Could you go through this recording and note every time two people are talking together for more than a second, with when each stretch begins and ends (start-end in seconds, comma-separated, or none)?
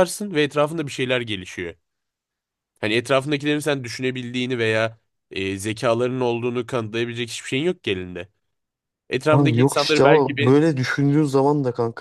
9.3-10.5